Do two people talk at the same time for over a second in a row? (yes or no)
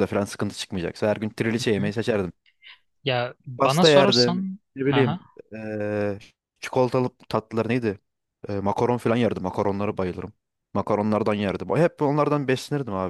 yes